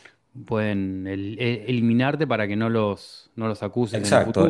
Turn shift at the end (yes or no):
yes